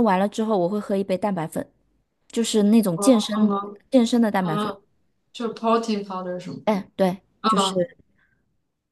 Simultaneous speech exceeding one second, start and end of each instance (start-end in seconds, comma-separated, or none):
none